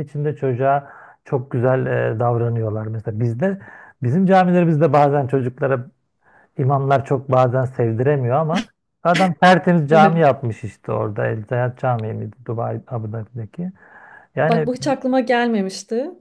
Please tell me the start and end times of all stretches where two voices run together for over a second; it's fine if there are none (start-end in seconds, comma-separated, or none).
none